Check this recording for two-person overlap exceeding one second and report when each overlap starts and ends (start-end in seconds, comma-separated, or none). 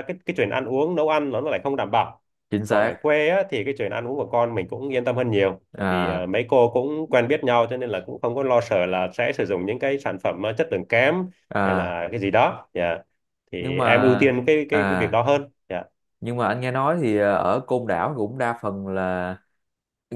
13.6-15.2